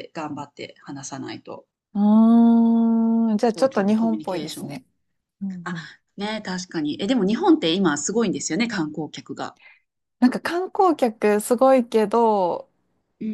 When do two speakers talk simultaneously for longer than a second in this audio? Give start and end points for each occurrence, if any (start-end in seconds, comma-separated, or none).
3.5-4.8